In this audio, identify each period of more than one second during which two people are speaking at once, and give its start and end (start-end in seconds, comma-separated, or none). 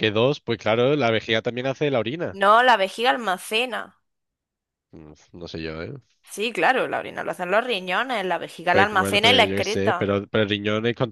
8.7-10.2